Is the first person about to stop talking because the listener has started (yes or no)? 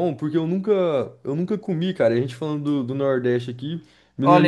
yes